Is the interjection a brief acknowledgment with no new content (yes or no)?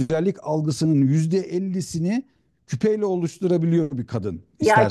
no